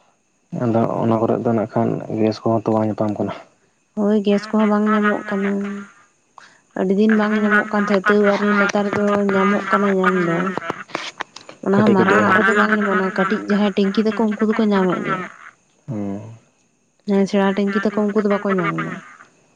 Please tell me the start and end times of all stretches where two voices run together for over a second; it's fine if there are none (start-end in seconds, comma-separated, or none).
11.7-13.4